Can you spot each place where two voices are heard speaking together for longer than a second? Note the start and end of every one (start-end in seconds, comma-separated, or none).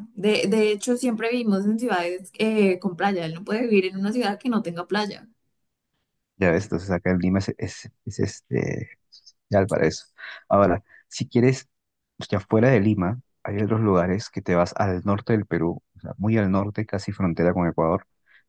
none